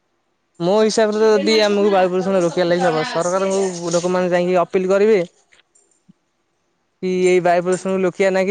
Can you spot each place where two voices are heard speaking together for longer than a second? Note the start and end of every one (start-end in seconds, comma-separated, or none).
0.6-3.6